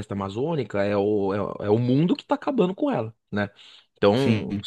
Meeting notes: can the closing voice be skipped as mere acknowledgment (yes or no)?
yes